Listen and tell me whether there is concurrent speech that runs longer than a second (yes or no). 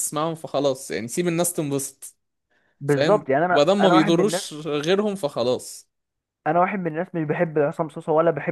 yes